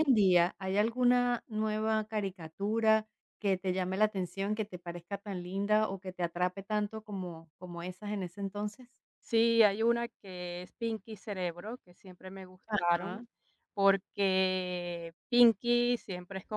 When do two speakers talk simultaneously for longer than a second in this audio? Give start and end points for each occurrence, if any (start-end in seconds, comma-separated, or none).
none